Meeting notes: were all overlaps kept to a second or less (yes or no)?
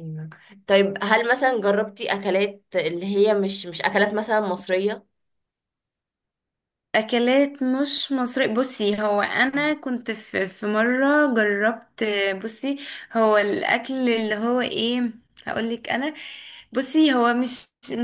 yes